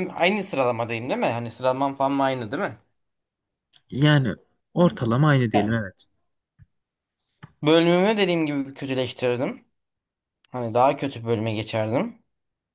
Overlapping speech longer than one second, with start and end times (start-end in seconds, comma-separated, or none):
none